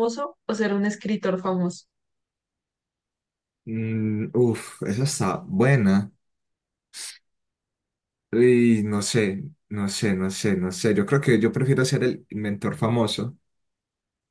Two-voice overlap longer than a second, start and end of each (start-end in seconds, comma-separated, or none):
none